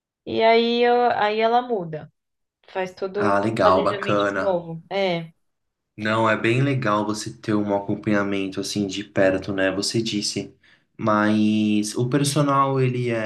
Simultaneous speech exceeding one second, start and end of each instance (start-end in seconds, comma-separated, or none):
3.2-4.6